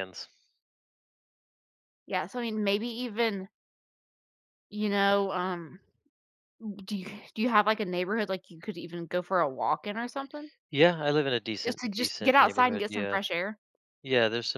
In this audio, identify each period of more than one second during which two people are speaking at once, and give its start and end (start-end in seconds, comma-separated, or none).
11.7-13.2